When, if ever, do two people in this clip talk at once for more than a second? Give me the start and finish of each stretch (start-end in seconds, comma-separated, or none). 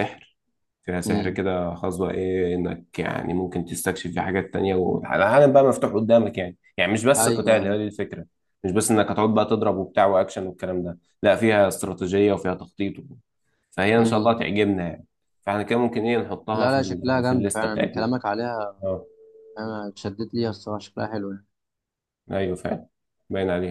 16.5-18.1